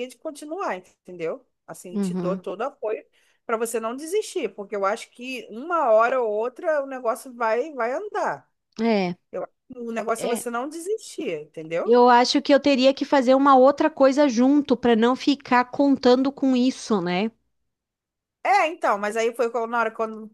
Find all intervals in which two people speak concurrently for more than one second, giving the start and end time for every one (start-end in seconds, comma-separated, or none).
none